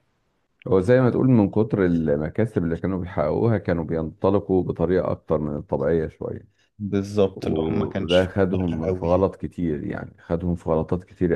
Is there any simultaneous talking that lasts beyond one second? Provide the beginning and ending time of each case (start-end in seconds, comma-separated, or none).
7.3-9.3